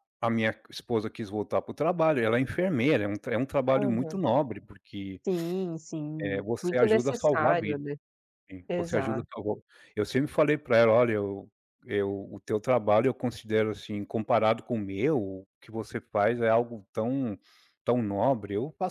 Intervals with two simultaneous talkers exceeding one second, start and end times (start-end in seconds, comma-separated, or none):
6.2-7.8